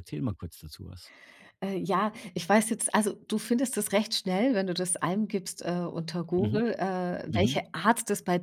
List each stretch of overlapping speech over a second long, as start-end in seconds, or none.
none